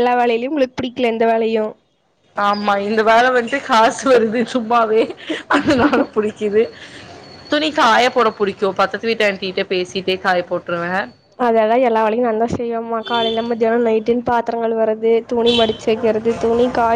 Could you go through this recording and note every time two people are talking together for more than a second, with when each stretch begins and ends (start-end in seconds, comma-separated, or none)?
none